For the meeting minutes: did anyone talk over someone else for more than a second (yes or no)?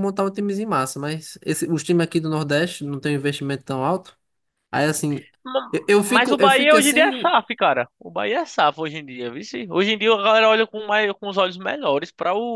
yes